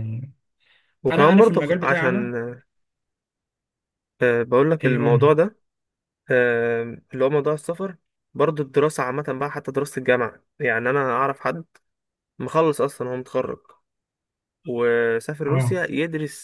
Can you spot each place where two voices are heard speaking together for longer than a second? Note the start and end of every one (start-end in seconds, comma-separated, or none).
1.1-2.3